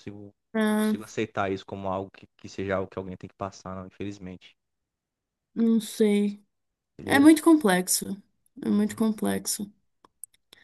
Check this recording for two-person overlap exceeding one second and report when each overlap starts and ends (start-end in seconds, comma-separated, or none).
none